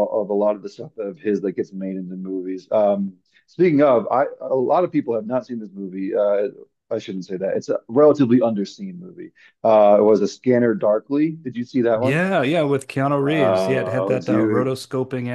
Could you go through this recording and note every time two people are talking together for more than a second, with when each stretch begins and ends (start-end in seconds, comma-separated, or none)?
13.3-14.7